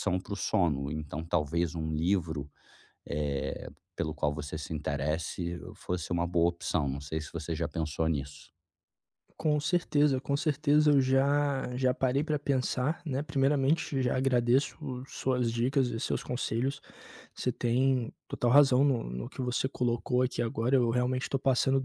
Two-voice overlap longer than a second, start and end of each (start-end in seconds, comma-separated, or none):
none